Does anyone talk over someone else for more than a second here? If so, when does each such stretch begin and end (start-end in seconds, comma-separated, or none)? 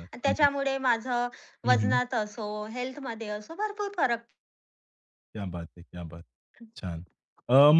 none